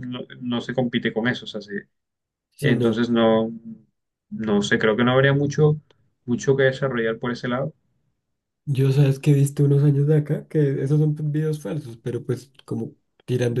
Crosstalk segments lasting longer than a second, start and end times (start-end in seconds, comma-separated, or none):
none